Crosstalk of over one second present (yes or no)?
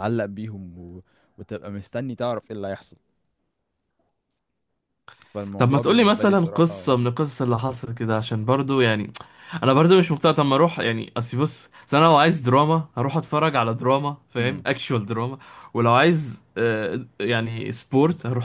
yes